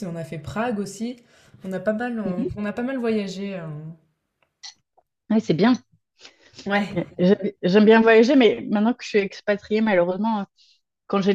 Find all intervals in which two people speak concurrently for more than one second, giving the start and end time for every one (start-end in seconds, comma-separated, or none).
none